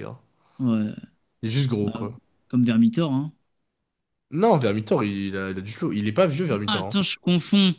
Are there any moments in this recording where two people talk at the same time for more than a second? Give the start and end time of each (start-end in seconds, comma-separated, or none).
none